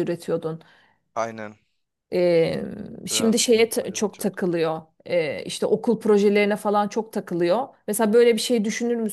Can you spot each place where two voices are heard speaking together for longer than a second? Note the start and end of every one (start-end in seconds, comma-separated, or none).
3.1-4.4